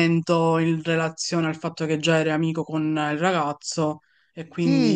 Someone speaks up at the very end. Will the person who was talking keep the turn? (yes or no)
no